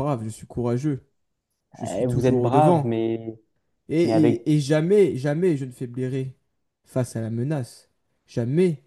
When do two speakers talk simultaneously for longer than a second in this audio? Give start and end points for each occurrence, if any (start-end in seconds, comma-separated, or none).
1.8-3.0